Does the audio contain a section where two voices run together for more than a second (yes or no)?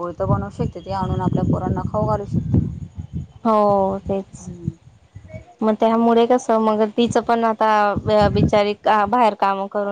no